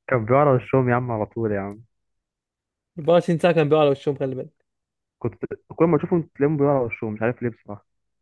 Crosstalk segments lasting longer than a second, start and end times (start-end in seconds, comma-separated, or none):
none